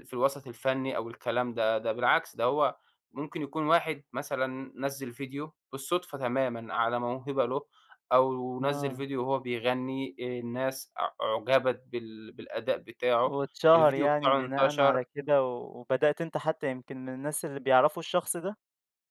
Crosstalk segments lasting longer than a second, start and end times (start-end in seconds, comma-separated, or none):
13.2-15.0